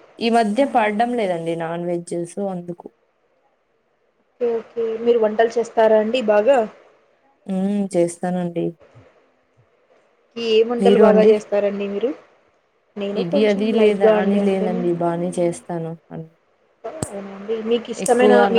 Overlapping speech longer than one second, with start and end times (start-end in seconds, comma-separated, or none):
13.2-14.8